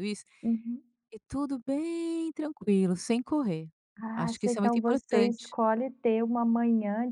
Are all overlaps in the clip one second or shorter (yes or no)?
no